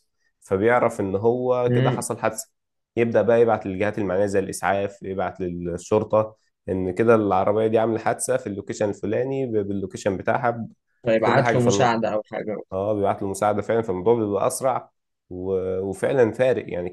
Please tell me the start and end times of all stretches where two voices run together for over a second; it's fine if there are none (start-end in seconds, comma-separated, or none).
none